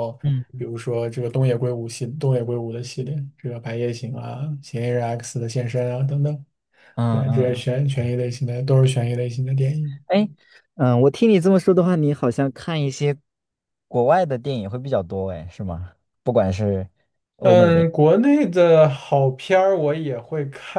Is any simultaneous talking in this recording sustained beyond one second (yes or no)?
no